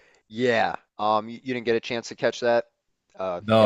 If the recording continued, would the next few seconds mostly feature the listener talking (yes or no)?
yes